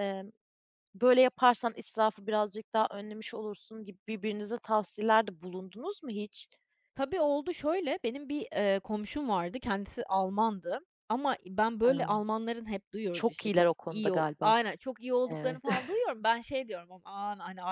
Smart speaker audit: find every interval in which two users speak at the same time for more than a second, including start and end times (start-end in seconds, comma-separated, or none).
13.1-14.5